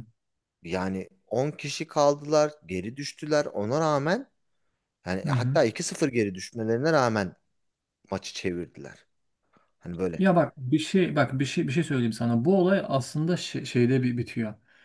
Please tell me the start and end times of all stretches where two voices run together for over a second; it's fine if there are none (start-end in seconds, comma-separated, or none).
none